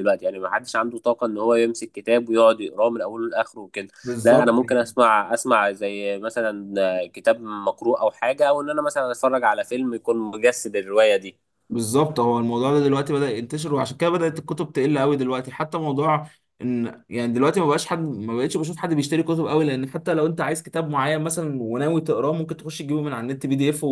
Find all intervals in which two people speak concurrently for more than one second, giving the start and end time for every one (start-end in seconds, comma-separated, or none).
none